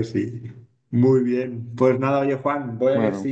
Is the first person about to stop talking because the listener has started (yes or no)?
no